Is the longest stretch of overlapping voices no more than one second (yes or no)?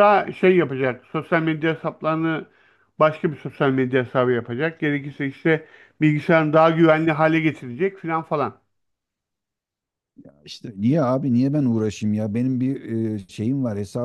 yes